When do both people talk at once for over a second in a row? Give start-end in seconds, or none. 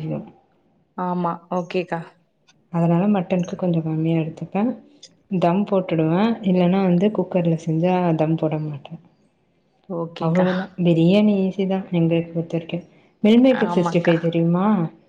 none